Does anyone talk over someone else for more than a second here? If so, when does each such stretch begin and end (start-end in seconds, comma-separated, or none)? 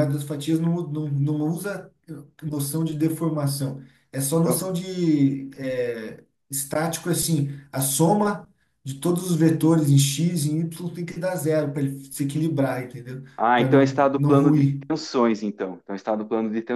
13.4-14.8